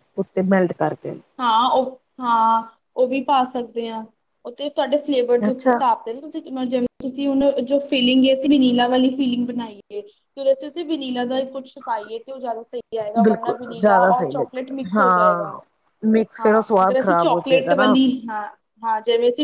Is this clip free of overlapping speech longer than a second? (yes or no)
no